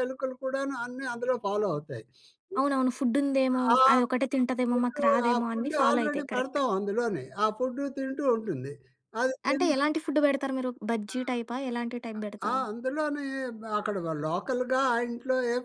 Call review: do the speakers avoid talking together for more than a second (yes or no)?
no